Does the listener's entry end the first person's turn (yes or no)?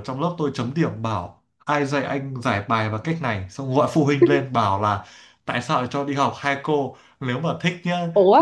no